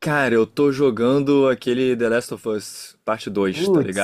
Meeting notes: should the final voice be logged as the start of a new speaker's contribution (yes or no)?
yes